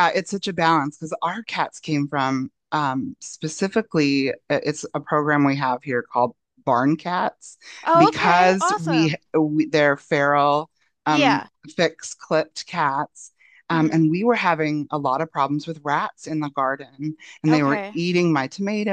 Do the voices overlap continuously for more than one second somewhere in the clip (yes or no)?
yes